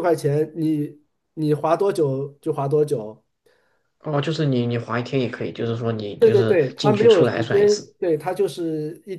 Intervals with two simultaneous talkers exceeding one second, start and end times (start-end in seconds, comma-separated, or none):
6.2-7.9